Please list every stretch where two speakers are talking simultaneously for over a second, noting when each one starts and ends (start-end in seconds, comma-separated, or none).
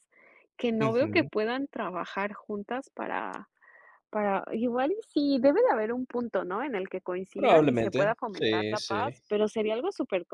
7.3-9.2